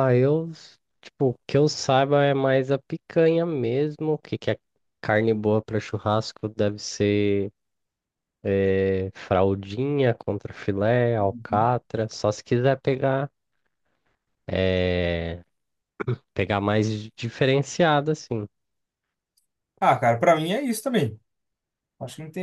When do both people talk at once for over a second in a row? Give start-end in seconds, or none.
none